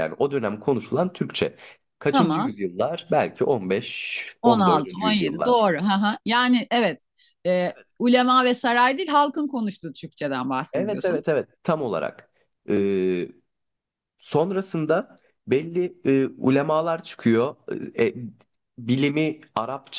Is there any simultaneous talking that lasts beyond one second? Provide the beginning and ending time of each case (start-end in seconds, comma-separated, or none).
4.4-5.7